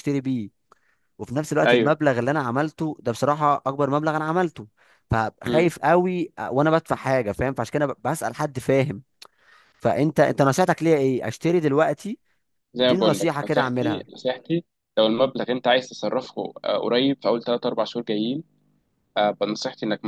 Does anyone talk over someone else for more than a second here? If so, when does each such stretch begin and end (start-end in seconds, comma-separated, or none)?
12.8-14.1